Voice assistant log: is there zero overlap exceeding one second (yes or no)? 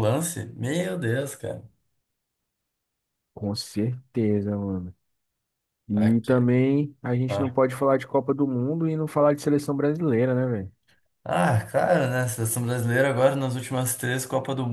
yes